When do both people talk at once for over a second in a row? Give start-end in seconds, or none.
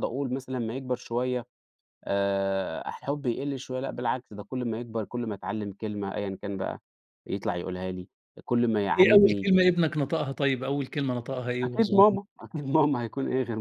none